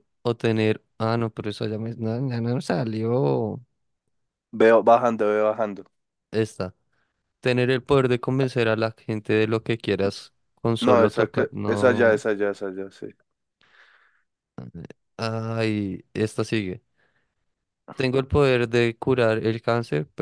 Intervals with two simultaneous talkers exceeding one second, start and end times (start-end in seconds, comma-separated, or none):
10.8-12.2